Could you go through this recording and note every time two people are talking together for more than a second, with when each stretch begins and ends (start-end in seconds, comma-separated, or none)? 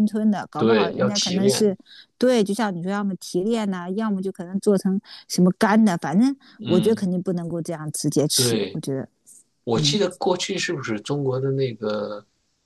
0.6-1.8